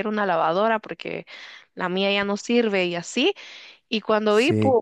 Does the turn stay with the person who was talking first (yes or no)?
yes